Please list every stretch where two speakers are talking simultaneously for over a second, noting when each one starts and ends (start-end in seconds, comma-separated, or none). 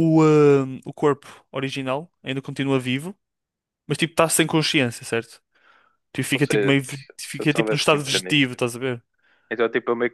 6.3-8.4